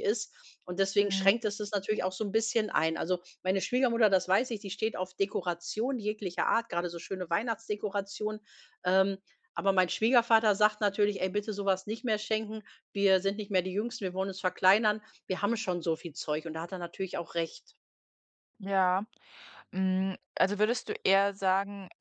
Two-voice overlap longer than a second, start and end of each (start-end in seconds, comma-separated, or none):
none